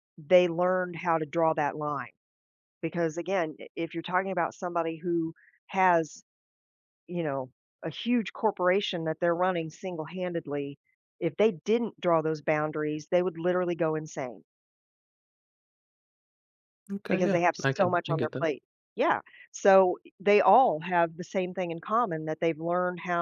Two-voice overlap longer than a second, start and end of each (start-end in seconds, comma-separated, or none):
17.1-18.5